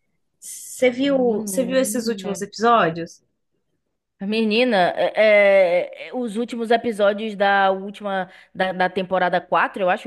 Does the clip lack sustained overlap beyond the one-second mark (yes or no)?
no